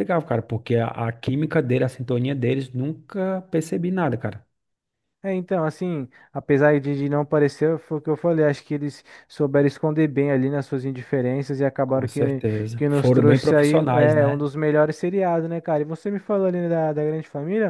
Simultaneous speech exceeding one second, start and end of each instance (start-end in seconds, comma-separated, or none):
11.8-14.5